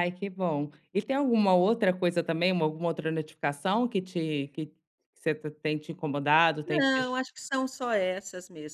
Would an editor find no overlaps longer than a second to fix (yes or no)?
yes